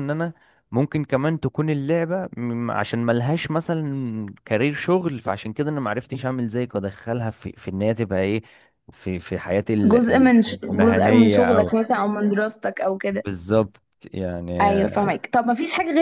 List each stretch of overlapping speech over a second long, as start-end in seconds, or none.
9.8-11.7